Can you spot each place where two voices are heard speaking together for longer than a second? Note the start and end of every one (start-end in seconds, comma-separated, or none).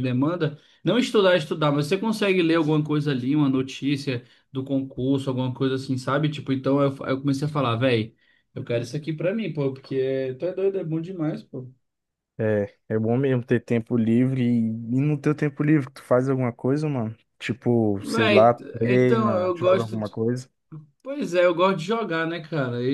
18.0-20.0